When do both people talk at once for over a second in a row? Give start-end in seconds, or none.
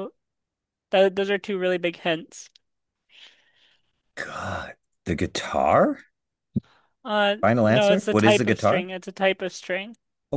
7.4-8.9